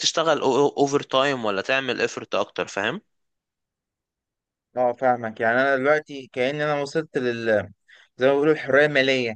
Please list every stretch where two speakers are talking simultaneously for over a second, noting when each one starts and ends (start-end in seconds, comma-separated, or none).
none